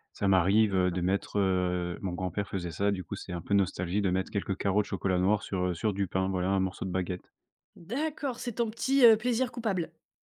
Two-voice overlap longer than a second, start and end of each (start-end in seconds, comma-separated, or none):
none